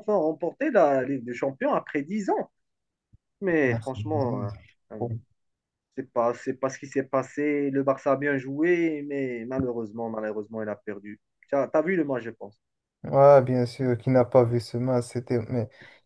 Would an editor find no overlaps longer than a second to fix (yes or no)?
yes